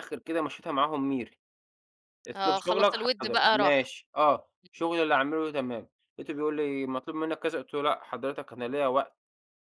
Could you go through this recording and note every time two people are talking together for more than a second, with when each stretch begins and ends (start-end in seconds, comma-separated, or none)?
2.4-3.9